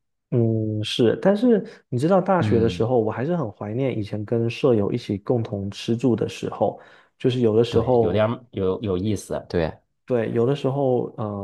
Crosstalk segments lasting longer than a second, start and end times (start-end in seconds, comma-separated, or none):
none